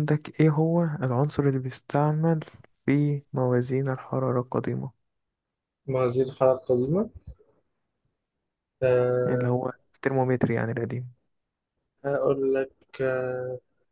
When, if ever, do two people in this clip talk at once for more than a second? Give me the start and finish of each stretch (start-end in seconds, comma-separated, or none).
none